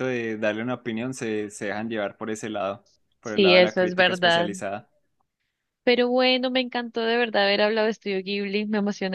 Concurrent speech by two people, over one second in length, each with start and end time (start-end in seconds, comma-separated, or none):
3.2-4.5